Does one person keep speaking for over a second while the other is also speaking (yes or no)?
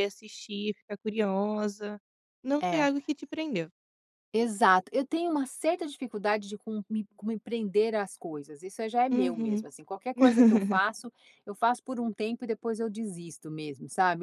no